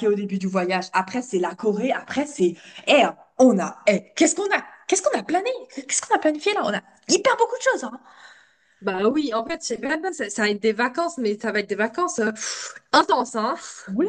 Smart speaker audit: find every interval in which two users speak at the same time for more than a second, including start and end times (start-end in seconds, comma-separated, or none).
none